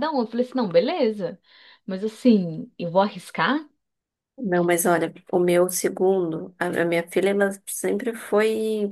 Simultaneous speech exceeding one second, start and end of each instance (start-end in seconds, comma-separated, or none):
none